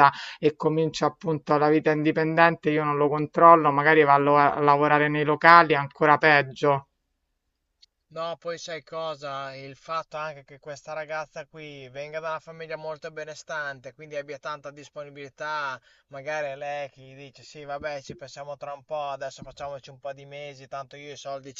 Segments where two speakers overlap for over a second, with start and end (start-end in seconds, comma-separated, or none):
none